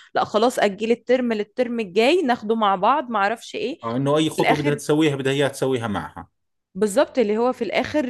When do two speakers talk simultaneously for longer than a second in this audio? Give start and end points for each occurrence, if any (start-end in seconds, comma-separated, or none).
none